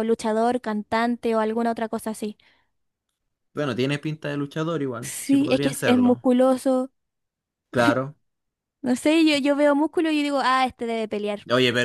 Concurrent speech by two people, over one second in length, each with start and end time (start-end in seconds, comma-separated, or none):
5.0-6.2